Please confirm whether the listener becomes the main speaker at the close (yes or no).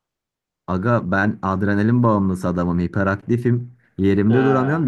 no